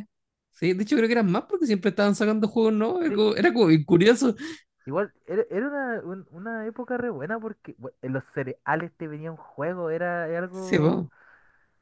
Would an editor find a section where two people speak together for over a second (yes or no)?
no